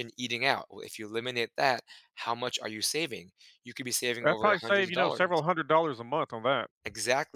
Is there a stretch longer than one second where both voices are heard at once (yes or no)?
yes